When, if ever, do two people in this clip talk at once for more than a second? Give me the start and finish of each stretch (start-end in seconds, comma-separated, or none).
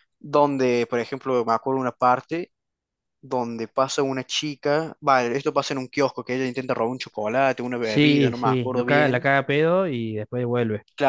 7.8-9.3